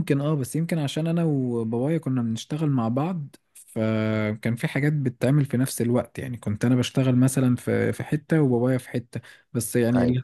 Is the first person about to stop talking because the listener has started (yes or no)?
no